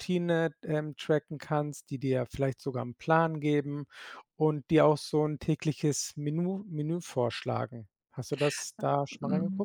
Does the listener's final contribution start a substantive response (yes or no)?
yes